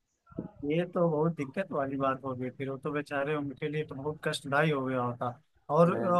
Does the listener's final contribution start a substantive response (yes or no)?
no